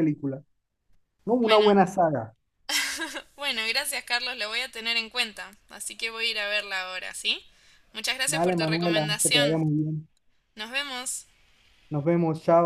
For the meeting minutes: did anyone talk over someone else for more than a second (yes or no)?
yes